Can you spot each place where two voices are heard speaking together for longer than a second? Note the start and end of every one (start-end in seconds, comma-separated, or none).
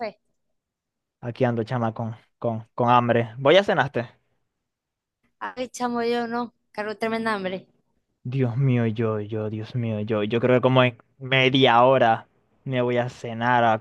none